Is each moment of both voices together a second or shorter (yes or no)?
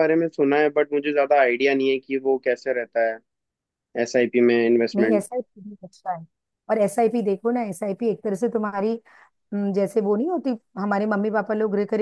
yes